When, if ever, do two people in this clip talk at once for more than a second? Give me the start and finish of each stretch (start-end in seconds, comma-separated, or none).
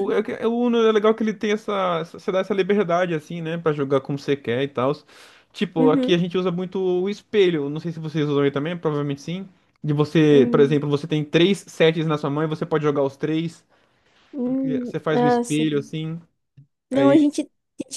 14.4-15.9